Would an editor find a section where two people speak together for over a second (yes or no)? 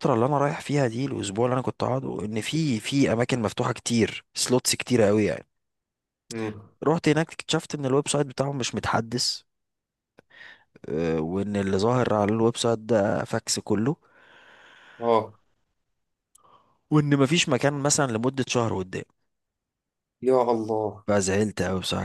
no